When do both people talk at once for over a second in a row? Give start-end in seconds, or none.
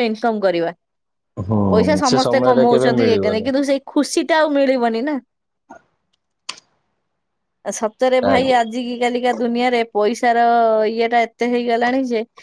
1.8-3.5